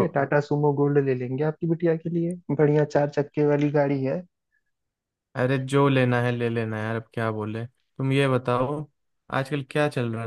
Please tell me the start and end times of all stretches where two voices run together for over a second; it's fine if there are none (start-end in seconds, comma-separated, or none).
none